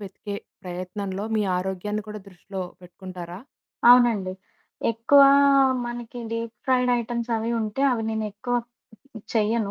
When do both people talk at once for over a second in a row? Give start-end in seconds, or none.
none